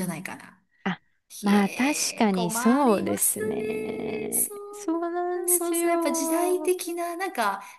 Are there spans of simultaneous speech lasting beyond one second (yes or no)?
yes